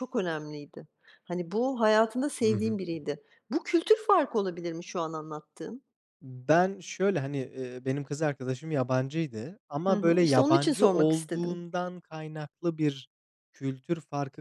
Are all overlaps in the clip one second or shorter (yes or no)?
no